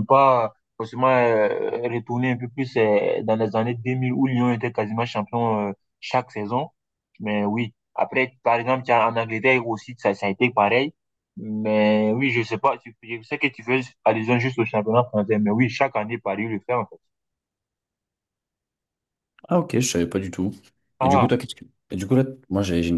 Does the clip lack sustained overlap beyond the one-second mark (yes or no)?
yes